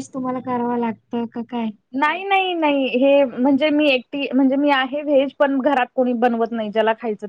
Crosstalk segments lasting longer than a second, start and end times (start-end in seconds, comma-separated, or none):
none